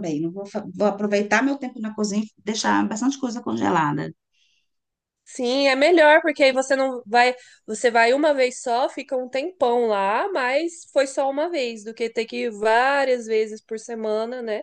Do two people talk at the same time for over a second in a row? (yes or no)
no